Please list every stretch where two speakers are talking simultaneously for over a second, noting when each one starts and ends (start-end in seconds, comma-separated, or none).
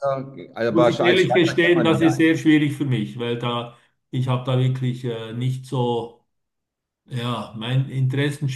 0.7-2.2